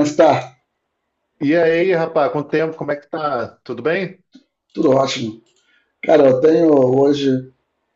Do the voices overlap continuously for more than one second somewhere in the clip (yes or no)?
no